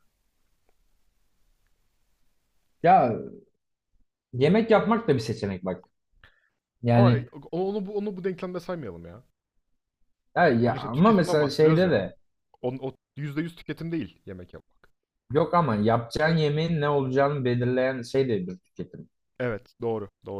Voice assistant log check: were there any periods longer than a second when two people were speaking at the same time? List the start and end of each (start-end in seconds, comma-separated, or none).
10.6-12.0